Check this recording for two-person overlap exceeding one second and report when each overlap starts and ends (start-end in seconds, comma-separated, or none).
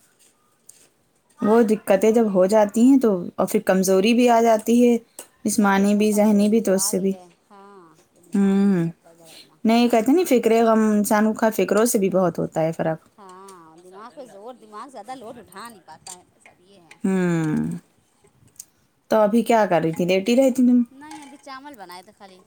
5.6-7.1